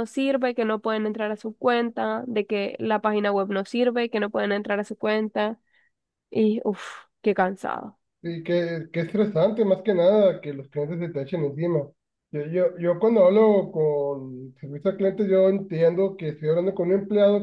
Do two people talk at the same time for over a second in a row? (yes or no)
no